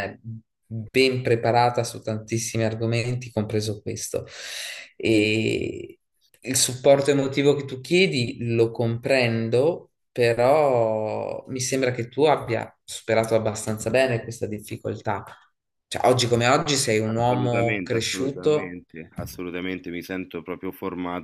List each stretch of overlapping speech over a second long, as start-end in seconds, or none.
17.1-18.7